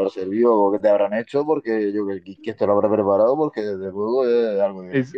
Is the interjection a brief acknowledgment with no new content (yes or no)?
no